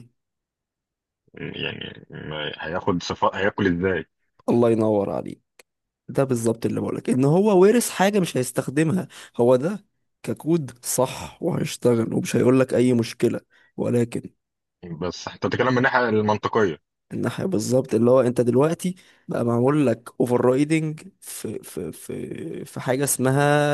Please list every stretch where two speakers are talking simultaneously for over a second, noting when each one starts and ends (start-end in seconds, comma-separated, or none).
none